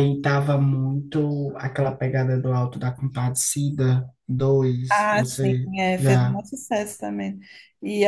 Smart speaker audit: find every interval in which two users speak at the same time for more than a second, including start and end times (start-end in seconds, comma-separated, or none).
4.9-6.4